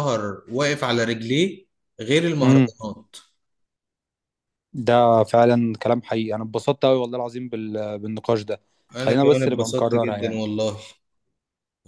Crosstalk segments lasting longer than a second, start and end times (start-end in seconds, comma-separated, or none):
9.0-10.4